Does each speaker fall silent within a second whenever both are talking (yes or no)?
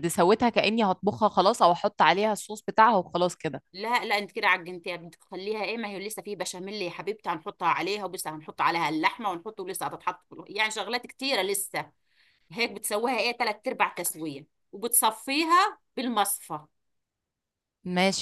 yes